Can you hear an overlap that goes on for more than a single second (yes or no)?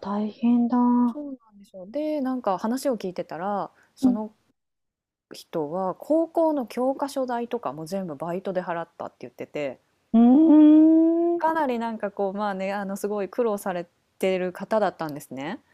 no